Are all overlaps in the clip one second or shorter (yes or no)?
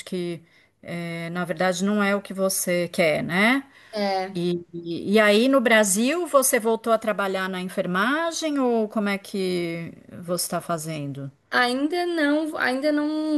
yes